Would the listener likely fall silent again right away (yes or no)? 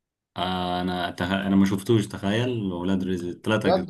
no